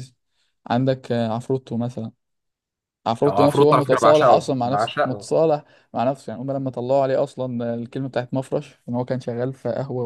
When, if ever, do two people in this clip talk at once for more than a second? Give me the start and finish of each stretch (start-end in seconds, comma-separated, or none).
3.3-5.3